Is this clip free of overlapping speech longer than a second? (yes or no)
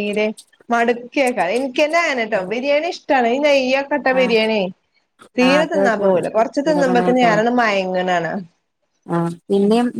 no